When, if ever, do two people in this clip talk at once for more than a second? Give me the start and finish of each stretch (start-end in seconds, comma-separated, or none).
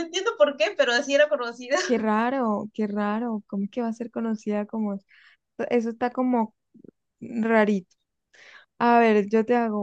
none